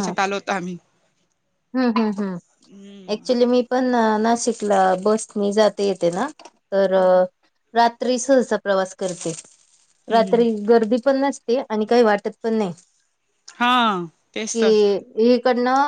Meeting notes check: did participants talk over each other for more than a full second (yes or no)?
no